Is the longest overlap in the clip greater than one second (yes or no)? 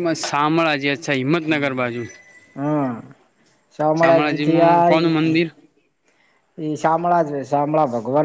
yes